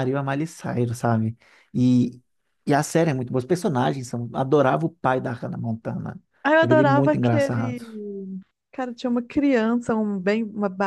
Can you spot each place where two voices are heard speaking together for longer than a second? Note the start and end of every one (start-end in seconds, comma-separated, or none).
6.6-7.8